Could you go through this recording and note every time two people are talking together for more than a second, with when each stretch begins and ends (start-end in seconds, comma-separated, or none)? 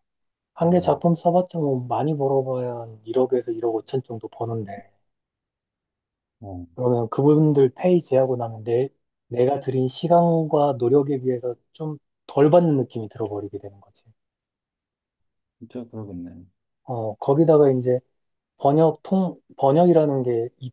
none